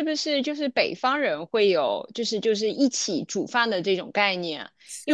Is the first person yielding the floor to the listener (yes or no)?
no